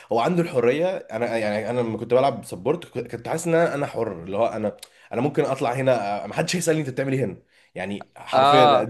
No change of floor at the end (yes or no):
yes